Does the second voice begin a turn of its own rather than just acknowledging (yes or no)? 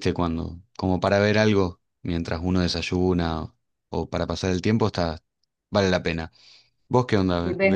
yes